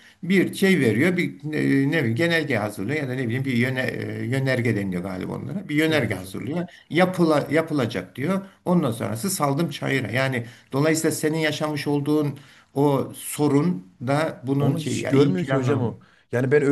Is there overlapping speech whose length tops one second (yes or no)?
yes